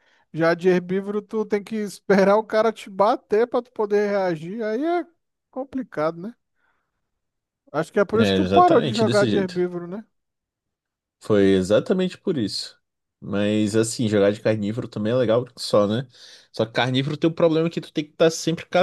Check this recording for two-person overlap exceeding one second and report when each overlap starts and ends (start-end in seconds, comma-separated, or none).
8.1-9.6